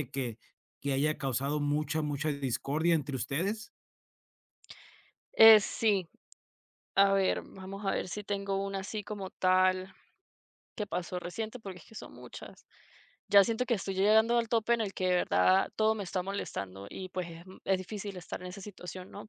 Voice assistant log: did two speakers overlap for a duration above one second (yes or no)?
no